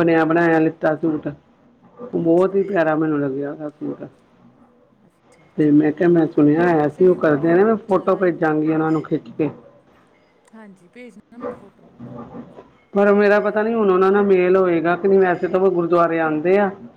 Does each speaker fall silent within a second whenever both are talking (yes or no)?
no